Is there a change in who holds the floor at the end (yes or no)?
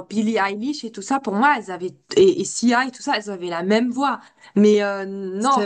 no